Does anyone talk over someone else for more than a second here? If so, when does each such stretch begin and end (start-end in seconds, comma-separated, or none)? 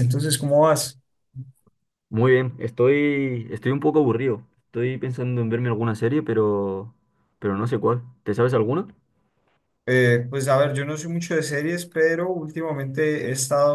none